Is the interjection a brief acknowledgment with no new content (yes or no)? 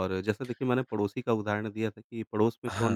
yes